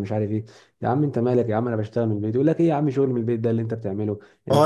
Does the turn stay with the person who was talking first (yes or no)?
no